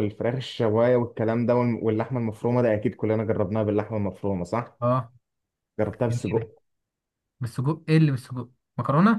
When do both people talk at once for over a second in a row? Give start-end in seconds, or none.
none